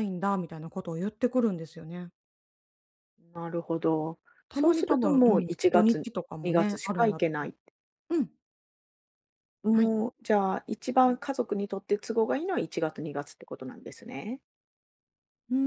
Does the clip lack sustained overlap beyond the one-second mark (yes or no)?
no